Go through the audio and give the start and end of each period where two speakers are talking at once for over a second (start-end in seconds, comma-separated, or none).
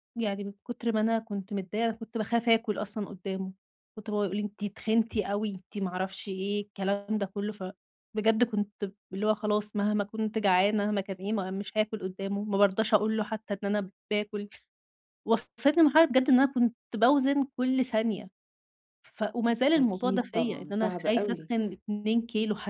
19.8-21.5